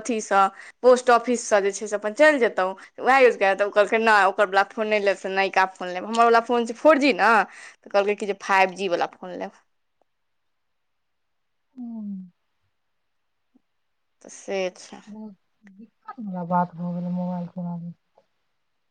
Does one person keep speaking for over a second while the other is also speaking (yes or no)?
no